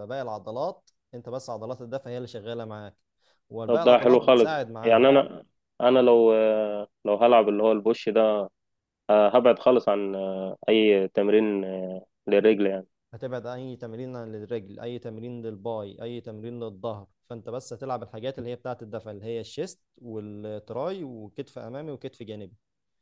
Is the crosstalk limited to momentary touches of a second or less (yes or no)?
no